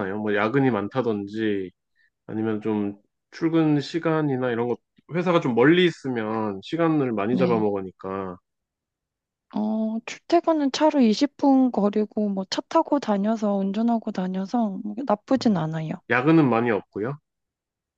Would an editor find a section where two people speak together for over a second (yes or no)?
no